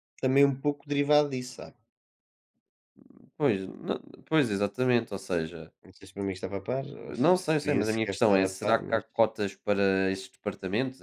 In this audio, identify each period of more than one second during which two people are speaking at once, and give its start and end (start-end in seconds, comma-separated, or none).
7.2-9.0